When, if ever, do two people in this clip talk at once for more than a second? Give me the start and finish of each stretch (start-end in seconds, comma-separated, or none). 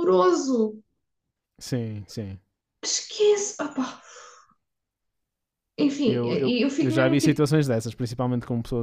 6.0-7.4